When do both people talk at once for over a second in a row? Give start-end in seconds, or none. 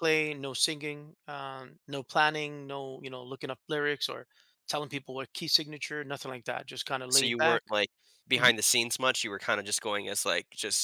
none